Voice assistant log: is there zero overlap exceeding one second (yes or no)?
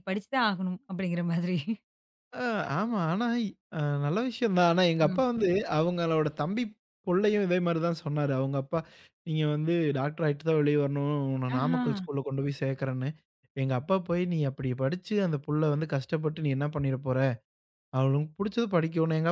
yes